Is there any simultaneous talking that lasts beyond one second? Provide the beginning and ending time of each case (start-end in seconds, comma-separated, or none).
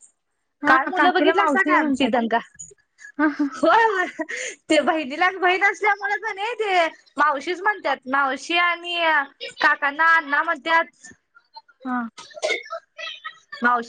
0.7-2.1